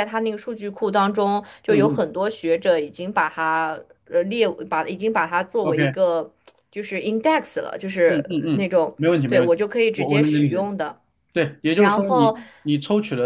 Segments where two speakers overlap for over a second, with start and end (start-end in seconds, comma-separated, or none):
8.0-10.7